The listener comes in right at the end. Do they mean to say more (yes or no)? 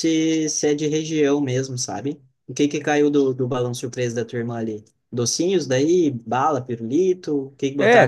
yes